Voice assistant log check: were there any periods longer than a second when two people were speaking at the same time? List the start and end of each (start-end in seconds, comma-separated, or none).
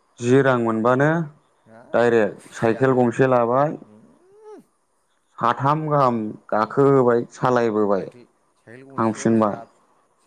2.0-3.7